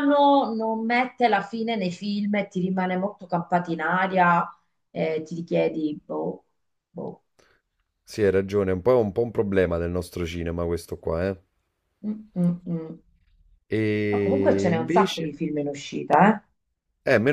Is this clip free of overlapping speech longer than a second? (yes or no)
no